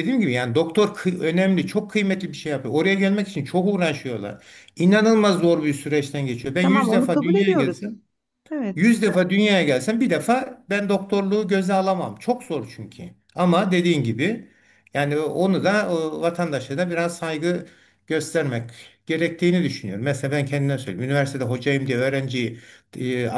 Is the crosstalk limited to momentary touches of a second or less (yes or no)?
no